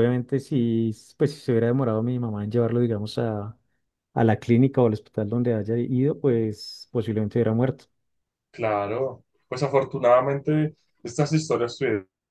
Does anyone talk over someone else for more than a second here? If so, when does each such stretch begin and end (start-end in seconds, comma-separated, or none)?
none